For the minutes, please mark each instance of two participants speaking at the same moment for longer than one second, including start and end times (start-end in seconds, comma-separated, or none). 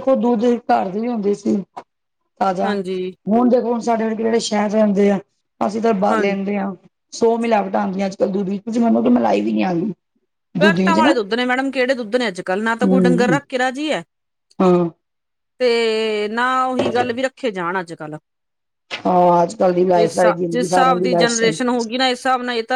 20.0-21.6